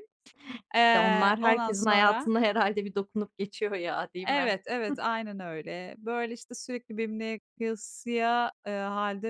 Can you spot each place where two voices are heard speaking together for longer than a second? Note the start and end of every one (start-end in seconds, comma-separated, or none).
0.8-2.3